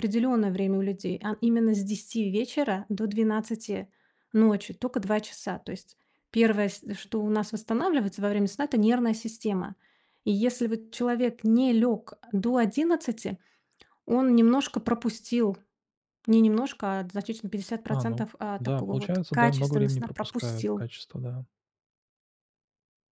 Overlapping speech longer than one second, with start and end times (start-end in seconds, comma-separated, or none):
17.9-20.9